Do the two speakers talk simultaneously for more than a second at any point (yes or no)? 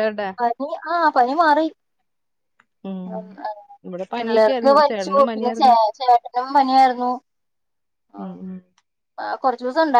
yes